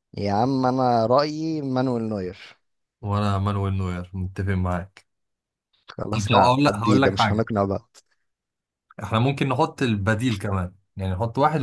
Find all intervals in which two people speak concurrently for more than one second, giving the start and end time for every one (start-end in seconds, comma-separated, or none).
6.1-7.5